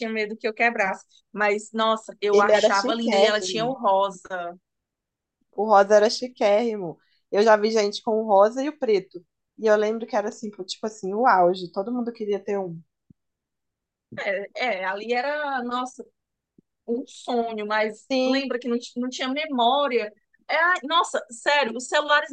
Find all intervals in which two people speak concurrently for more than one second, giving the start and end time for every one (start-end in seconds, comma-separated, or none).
2.3-3.8